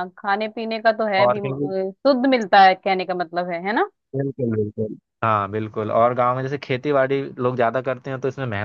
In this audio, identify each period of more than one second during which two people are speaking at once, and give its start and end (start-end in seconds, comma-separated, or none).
none